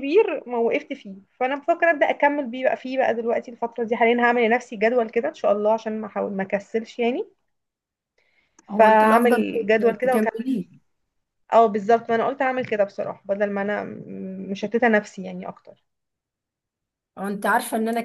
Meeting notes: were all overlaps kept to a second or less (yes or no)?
no